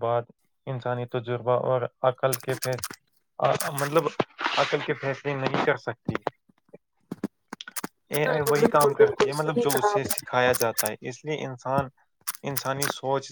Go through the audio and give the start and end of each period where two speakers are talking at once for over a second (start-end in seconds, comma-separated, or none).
8.3-10.3